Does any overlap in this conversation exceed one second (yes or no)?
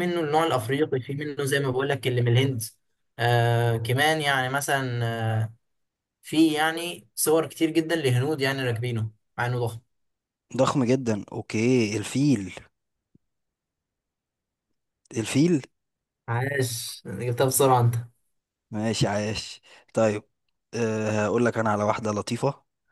no